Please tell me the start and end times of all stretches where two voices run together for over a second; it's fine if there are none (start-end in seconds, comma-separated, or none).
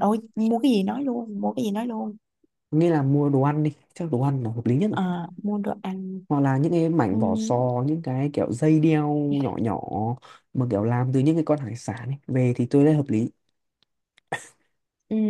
none